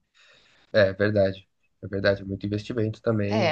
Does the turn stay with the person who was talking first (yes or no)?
no